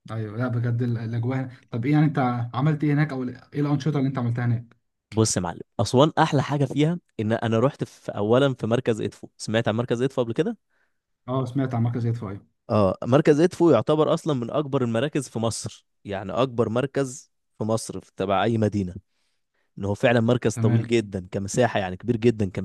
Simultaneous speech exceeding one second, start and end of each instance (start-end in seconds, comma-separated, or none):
none